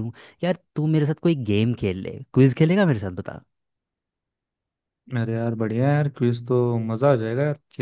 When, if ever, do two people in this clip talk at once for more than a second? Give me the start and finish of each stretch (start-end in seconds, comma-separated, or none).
none